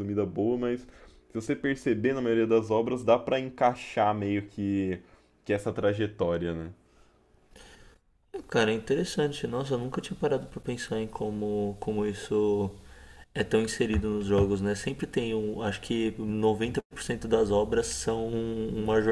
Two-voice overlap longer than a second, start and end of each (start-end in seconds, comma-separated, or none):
none